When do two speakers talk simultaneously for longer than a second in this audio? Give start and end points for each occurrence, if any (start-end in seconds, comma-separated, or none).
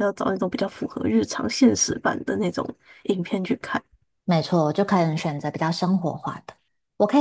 none